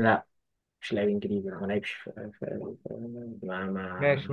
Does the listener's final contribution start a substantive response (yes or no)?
yes